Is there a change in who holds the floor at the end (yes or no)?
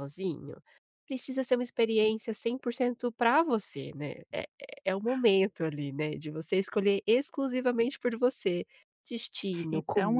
yes